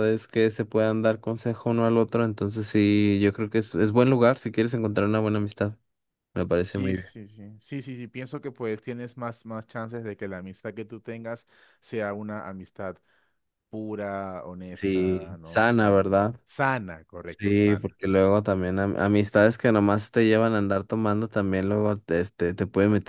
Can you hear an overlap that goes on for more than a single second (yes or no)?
yes